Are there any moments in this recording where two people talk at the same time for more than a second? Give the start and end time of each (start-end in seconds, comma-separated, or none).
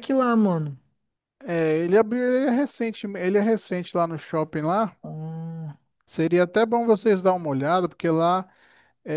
none